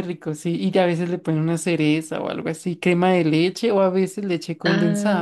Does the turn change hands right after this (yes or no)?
yes